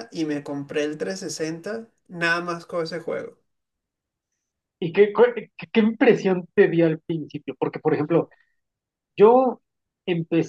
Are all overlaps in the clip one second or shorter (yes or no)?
yes